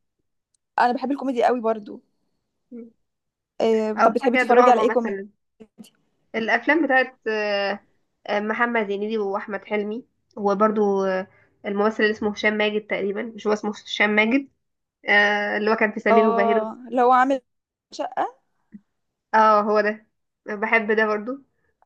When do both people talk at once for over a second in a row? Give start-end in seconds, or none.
4.0-5.2